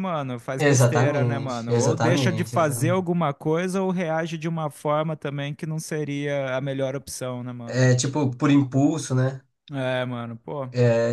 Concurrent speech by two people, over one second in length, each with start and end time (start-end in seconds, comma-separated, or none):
0.6-3.1